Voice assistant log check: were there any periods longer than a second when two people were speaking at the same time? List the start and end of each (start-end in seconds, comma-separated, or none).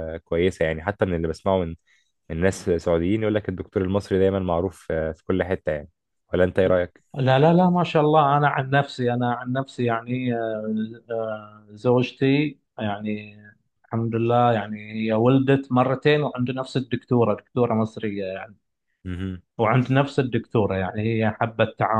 none